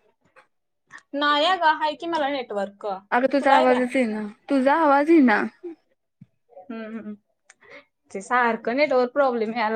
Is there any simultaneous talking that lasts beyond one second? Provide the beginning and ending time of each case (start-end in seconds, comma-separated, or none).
none